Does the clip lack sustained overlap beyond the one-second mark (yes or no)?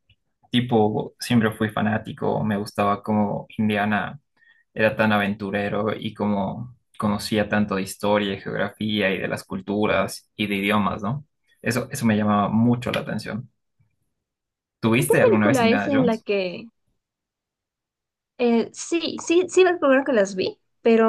no